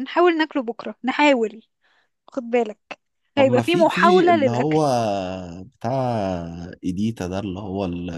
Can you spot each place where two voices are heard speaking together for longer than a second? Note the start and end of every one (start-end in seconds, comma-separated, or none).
3.4-4.8